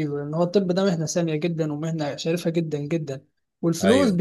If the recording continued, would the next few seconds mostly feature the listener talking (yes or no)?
no